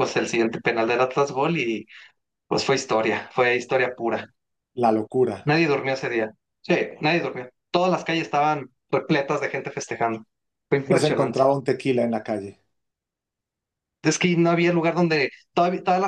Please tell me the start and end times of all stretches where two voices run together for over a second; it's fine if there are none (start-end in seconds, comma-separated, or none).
none